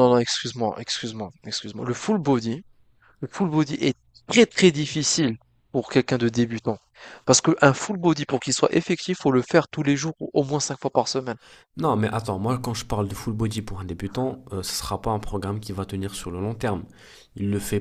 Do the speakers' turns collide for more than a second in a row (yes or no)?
no